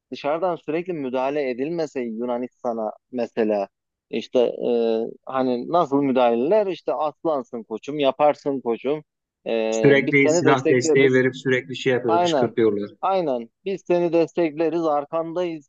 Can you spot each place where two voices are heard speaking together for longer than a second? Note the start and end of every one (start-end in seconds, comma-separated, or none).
9.7-11.2